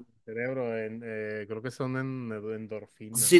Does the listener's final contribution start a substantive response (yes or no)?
yes